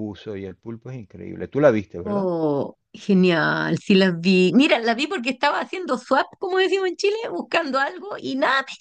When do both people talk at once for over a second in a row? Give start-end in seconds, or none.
none